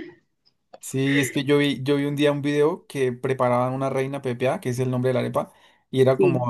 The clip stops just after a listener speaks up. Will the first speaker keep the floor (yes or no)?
yes